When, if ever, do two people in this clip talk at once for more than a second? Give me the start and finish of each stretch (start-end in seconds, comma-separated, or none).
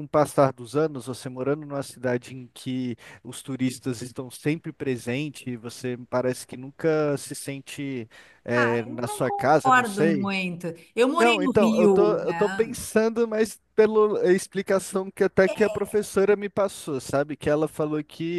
8.5-10.3, 11.2-12.8